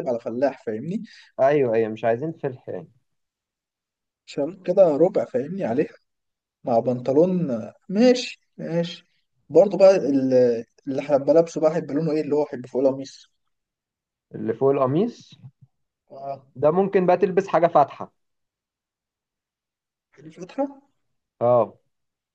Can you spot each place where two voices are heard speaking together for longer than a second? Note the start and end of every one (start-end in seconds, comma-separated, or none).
none